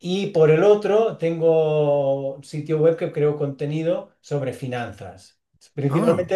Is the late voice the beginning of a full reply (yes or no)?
no